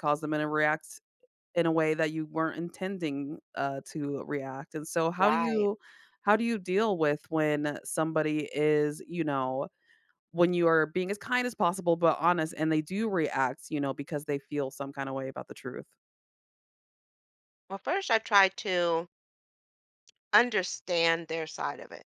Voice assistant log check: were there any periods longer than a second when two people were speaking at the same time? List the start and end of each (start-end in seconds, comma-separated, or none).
none